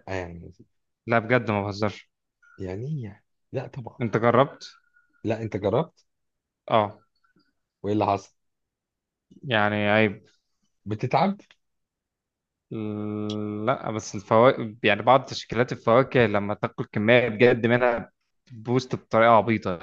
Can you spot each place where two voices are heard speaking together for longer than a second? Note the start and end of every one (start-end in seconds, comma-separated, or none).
none